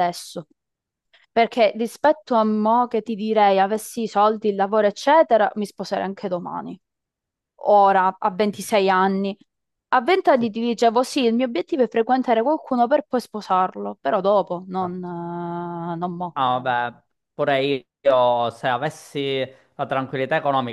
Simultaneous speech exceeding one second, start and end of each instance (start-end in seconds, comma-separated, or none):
none